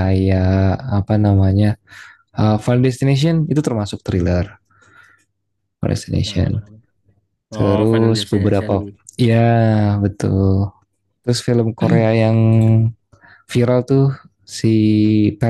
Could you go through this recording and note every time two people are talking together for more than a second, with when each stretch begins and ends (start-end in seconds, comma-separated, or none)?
7.5-9.0